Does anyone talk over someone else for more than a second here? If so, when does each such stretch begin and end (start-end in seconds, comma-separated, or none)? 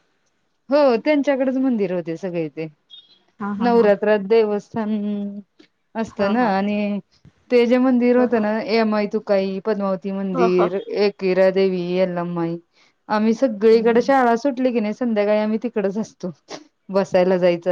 none